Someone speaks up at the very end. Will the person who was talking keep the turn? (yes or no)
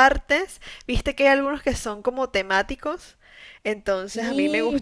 yes